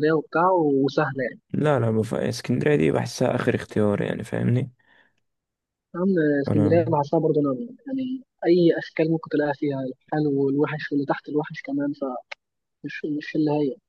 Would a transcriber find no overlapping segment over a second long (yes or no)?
yes